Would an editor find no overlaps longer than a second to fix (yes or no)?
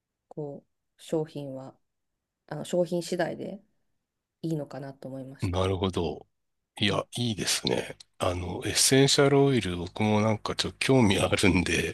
yes